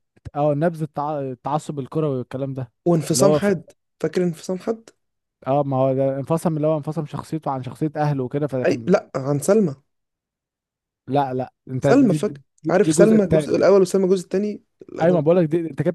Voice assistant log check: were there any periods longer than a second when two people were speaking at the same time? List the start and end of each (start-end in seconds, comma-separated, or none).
11.8-13.6